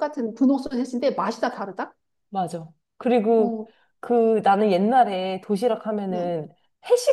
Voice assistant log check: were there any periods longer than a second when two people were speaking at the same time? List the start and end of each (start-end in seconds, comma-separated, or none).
none